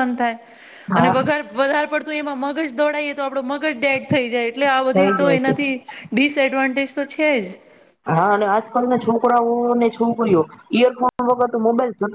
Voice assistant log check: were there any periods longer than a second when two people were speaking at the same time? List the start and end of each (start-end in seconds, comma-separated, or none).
none